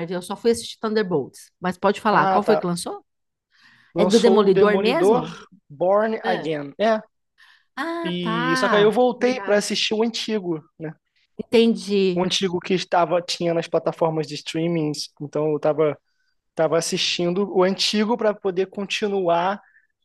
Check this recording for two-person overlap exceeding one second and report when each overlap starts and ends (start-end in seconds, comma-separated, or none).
4.0-5.4, 8.0-9.7